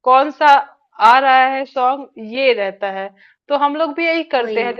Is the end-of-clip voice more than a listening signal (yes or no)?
no